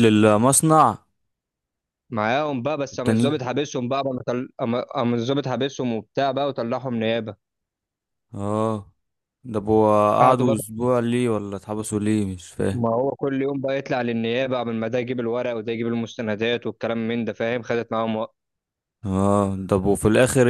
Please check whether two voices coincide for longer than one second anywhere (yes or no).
no